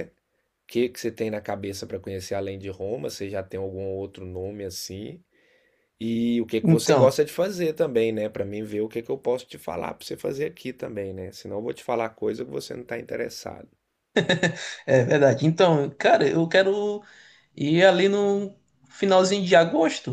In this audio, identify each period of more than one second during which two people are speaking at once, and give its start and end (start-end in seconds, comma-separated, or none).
none